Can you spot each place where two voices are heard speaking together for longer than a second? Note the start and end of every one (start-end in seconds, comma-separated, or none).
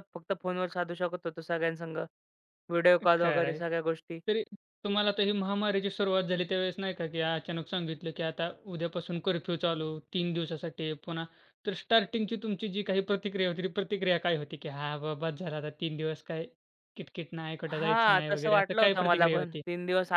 17.8-19.6